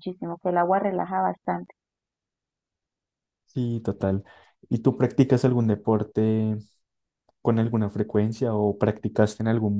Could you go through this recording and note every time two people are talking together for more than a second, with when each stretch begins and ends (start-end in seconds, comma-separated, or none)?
none